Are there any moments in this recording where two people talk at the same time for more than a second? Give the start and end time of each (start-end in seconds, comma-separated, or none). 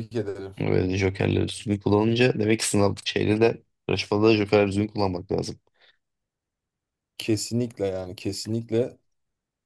none